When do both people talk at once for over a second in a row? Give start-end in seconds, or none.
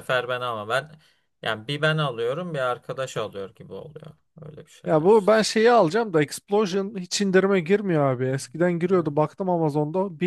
none